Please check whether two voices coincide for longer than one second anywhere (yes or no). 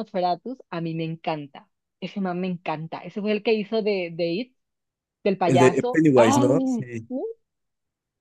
yes